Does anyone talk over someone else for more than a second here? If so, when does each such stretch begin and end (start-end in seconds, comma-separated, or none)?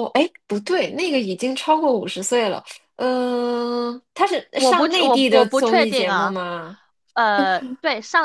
4.5-6.3